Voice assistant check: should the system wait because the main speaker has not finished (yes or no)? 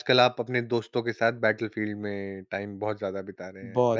no